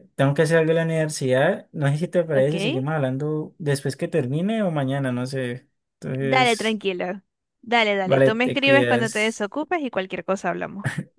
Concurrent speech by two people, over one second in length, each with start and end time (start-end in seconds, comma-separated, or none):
8.0-9.5